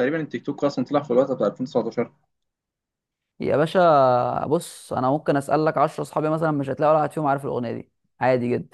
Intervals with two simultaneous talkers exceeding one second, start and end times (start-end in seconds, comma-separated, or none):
none